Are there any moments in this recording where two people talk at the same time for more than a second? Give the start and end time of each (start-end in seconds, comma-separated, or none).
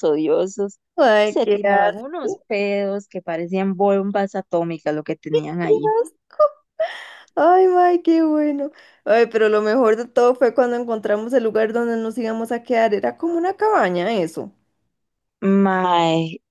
1.2-2.5